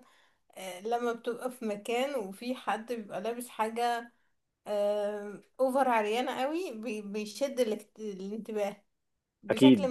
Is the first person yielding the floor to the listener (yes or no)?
no